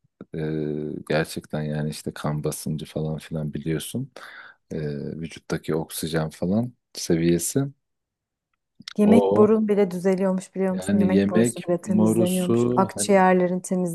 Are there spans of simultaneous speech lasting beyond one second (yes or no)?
yes